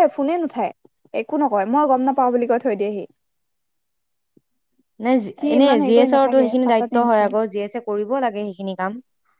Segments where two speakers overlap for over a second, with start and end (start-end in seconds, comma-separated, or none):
5.4-7.3